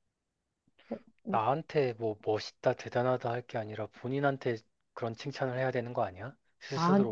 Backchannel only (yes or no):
no